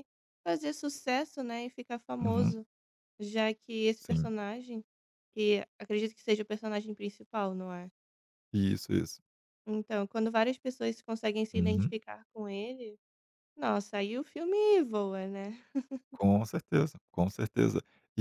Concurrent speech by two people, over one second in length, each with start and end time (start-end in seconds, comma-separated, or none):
none